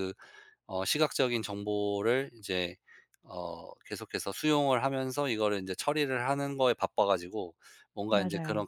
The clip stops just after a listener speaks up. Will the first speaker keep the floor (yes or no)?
yes